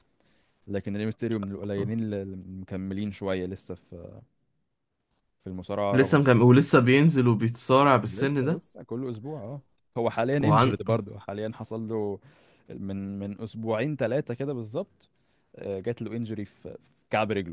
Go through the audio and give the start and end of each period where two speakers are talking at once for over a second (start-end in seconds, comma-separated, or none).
none